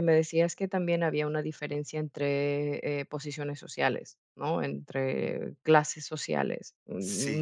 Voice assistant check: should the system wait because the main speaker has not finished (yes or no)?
yes